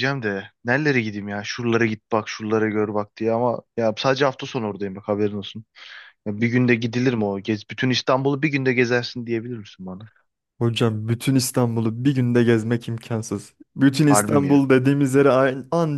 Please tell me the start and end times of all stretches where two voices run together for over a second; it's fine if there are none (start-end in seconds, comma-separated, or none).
none